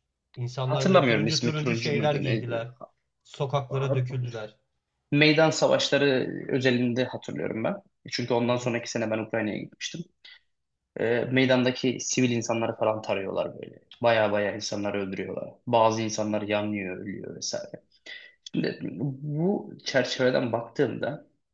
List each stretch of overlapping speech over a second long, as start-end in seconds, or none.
0.6-2.7